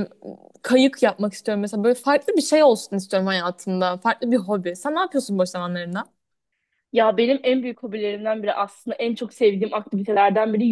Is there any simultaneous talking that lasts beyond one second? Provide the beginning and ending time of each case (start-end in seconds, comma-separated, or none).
none